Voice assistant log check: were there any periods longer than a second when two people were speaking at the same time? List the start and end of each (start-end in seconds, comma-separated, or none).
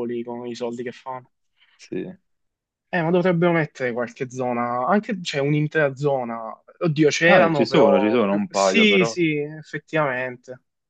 7.2-9.2